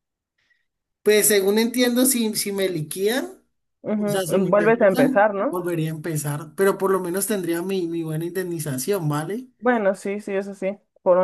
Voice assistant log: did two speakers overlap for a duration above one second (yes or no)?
yes